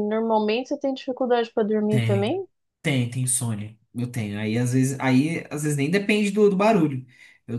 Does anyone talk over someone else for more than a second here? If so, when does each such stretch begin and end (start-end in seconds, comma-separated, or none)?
none